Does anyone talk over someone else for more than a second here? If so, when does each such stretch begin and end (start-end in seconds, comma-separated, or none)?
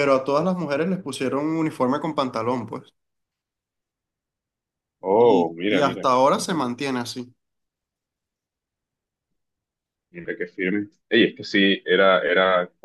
5.2-6.7